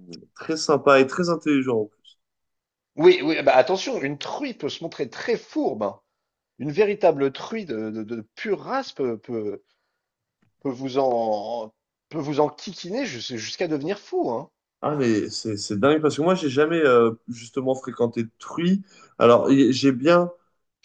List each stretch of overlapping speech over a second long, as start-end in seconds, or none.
none